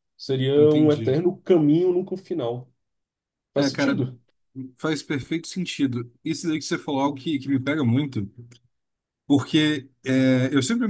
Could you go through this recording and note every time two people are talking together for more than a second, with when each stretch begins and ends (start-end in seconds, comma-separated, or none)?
none